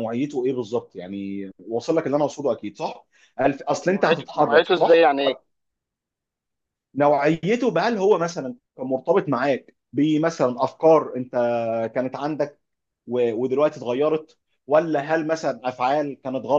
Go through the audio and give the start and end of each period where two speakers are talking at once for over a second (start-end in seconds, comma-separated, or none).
3.9-5.1